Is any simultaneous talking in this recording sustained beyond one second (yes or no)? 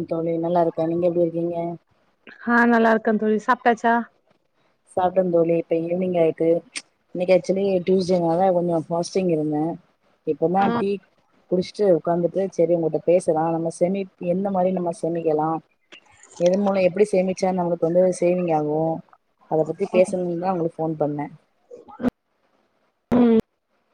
no